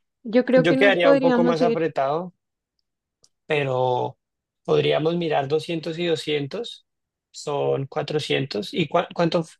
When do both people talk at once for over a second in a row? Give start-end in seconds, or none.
0.6-1.9